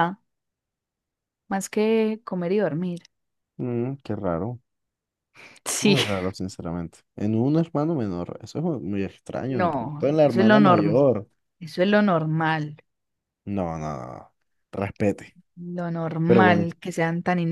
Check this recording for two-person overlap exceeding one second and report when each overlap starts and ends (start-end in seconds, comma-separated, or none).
9.5-11.1